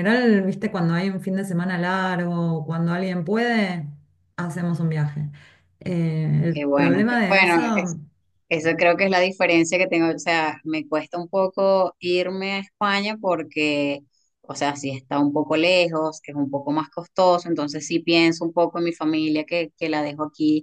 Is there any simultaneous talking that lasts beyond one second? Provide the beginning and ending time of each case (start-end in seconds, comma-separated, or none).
6.5-8.0